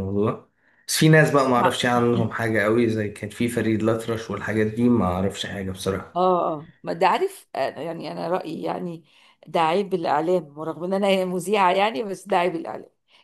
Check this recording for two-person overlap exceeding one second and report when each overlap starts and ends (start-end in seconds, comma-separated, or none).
none